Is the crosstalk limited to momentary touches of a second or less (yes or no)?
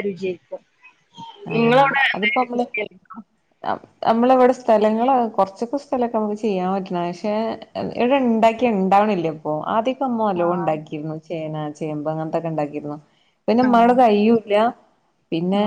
yes